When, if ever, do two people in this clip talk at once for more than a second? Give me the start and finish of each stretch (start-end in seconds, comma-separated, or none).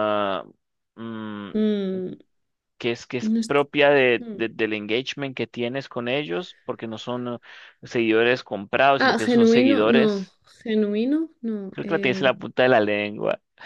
9.0-10.3